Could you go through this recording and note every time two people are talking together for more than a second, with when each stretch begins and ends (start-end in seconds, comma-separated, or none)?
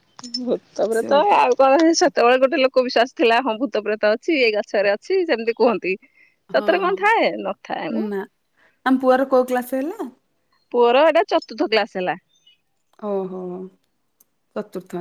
none